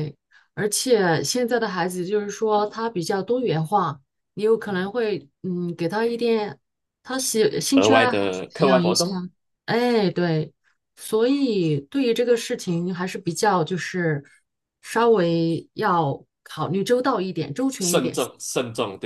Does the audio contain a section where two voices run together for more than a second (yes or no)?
yes